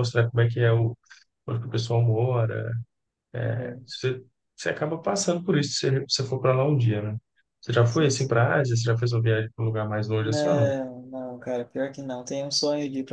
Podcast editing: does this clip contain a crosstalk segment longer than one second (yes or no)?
no